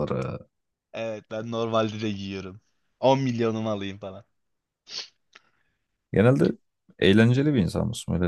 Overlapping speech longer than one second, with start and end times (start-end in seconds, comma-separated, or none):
none